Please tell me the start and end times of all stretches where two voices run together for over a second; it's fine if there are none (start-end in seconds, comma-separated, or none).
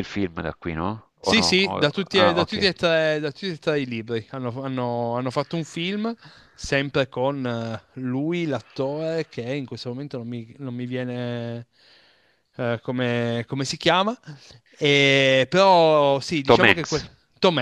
1.2-2.7